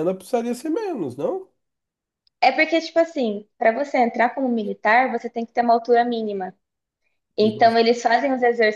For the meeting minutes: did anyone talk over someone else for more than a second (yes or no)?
no